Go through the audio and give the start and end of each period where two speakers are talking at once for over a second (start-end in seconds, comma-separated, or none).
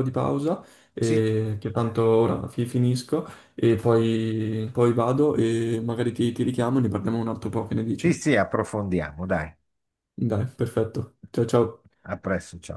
none